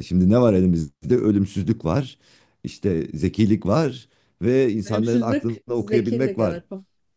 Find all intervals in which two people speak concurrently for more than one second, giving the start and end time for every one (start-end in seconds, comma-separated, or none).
4.8-6.6